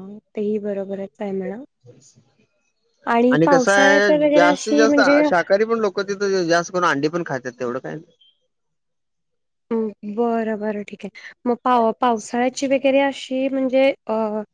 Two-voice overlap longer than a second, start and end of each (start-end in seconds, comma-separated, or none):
3.4-5.2